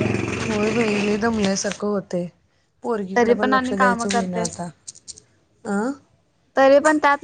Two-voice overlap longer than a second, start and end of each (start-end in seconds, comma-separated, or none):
3.2-4.6